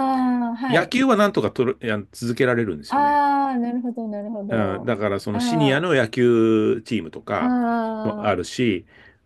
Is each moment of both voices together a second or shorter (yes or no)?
no